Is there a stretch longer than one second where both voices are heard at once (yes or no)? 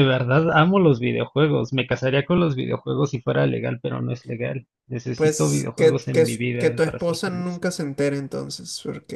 yes